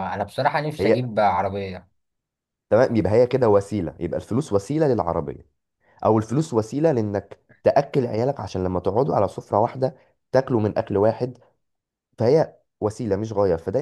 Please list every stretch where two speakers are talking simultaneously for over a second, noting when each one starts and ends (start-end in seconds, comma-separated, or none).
none